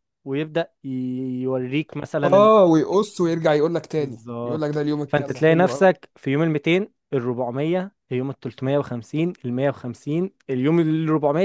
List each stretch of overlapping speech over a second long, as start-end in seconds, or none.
4.0-6.1